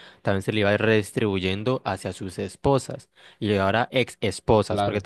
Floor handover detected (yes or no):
no